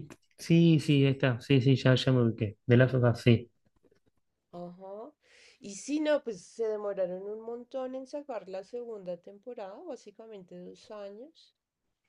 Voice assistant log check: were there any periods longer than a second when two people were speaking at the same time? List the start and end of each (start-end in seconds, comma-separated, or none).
none